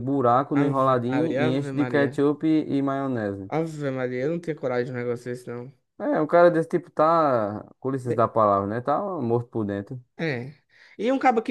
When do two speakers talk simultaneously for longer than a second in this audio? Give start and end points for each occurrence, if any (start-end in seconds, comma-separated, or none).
0.5-2.2